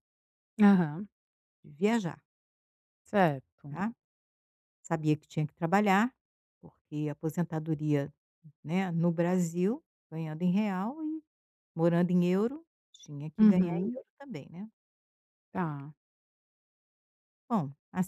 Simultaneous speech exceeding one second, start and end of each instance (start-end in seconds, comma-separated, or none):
none